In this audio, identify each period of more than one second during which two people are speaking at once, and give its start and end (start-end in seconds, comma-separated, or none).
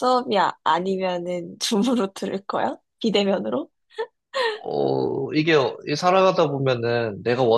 none